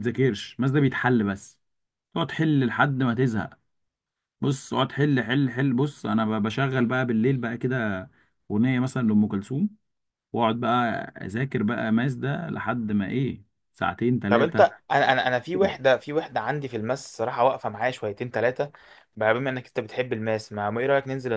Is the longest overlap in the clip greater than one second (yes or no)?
no